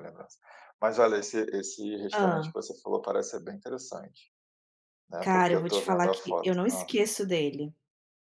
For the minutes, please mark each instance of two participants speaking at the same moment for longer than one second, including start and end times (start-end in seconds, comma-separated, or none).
5.2-6.9